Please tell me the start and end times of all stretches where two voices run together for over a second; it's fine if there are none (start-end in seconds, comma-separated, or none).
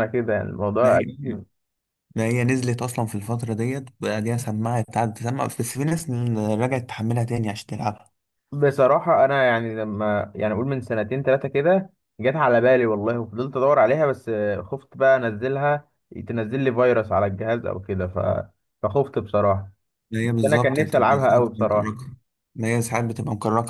20.2-22.0